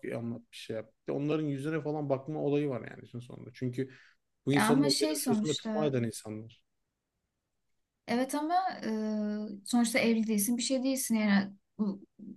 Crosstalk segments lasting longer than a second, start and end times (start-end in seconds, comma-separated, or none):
4.5-5.9